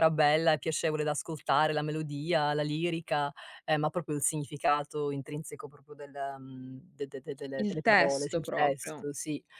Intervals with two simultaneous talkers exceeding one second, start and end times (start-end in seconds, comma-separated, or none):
7.5-9.1